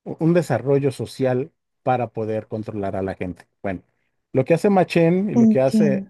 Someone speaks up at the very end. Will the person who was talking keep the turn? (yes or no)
yes